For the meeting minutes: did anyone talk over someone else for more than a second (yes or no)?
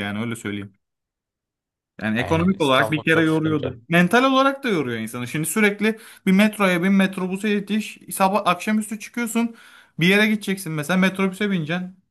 yes